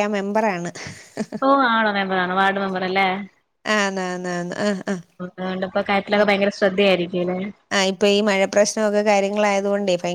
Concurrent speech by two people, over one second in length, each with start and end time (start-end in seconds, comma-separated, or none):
none